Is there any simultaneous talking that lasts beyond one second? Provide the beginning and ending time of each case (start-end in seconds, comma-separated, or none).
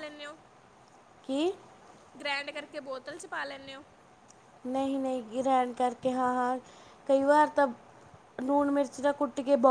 none